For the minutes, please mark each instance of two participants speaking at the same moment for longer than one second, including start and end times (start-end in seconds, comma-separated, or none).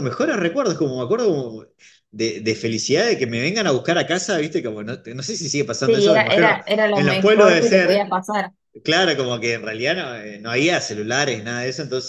5.8-8.0